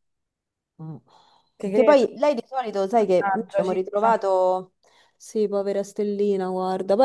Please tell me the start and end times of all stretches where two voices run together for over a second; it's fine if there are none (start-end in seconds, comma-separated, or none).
3.0-4.2